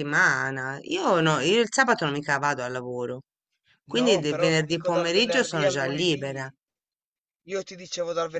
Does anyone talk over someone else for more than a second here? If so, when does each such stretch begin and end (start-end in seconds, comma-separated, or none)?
3.9-6.5